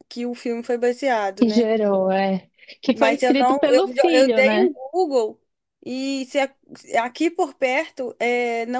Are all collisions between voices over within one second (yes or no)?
no